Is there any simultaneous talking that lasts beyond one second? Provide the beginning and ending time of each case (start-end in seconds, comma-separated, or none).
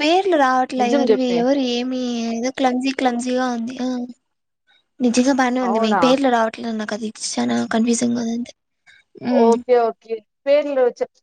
none